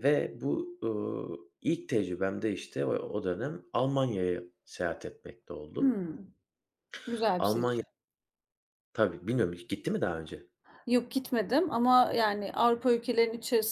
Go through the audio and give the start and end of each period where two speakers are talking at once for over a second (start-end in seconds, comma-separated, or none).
none